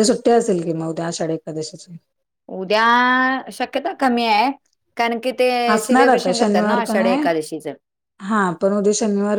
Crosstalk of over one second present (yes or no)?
yes